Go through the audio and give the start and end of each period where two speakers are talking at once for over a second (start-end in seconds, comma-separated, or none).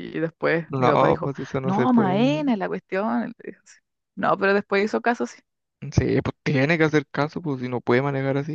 0.7-2.4